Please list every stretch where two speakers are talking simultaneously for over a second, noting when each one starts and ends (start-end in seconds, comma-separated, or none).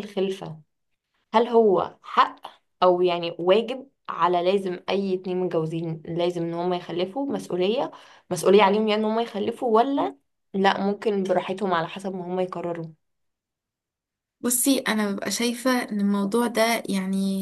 none